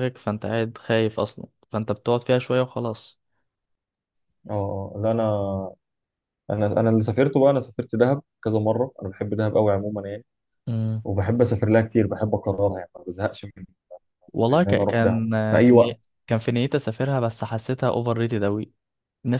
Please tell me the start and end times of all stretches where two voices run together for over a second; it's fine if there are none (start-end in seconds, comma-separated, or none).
14.5-16.1